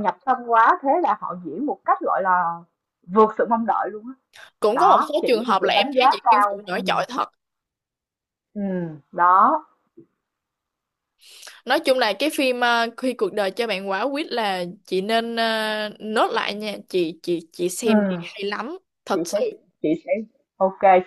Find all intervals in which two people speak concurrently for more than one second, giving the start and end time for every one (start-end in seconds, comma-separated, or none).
4.7-6.8